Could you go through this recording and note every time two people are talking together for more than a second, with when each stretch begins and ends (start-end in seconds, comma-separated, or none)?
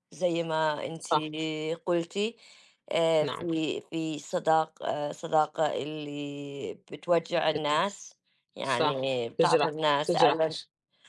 8.6-10.6